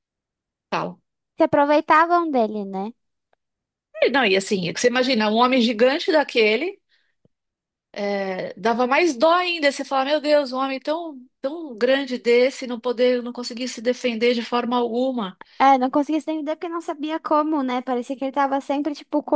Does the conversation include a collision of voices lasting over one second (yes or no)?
no